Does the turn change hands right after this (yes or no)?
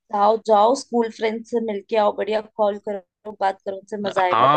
yes